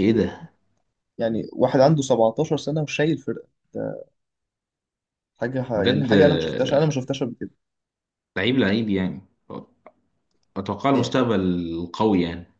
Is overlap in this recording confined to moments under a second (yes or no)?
no